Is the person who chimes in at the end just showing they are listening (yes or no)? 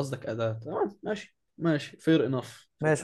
no